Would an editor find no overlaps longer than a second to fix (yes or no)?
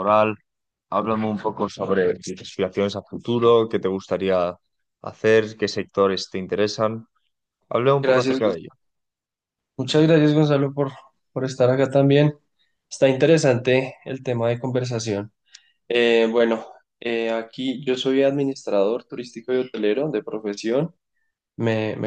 yes